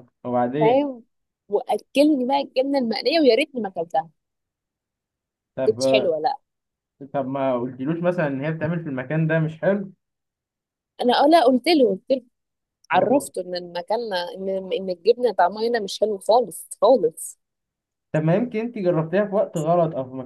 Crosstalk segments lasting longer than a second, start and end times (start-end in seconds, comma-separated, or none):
none